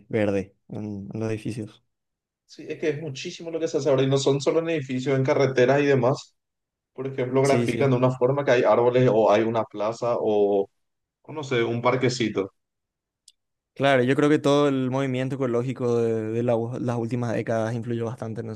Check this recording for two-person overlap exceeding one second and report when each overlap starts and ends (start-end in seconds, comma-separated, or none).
none